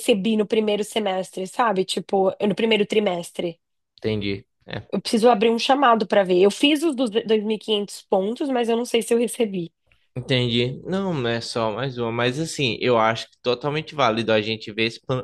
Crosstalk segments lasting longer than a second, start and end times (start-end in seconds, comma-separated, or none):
none